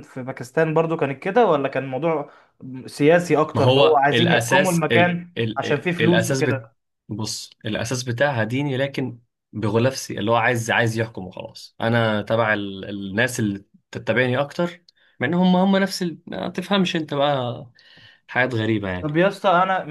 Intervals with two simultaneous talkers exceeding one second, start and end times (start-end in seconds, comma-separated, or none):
3.5-6.6